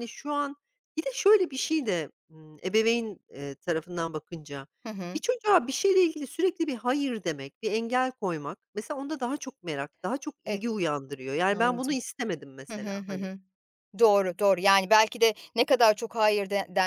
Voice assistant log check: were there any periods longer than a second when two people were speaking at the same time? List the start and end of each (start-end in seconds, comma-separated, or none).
none